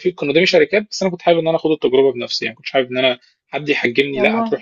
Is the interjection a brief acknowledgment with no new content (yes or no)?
yes